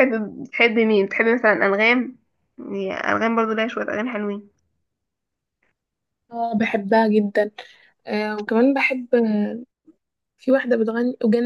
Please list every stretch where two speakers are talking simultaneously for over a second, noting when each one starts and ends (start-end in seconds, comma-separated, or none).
none